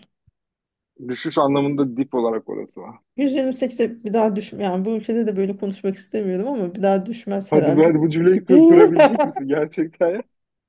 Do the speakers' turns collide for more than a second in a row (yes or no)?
no